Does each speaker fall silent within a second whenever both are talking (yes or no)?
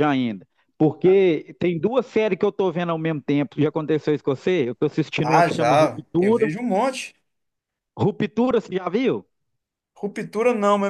no